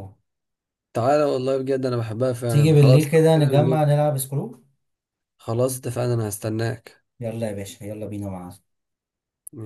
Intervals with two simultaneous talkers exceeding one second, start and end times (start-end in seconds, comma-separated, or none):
2.5-3.8